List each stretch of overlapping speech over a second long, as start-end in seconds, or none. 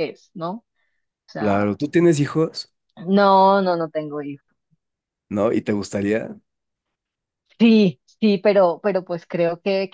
none